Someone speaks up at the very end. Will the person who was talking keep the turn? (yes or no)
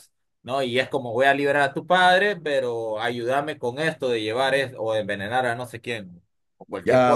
no